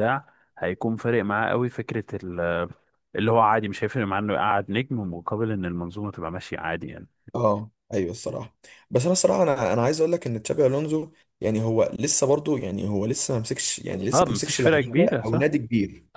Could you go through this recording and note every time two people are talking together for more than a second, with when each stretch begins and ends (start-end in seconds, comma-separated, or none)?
14.1-15.5